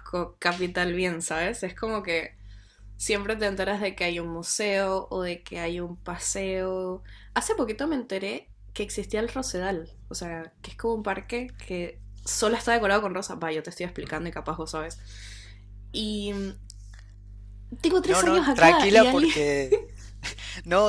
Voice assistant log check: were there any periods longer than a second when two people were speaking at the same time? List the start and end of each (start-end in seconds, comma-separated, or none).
18.0-19.3